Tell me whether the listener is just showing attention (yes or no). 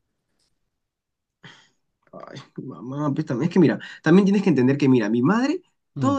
yes